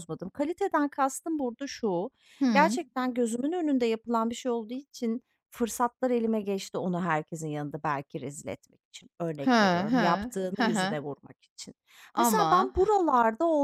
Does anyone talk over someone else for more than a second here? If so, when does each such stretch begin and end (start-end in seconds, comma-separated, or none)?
9.4-10.9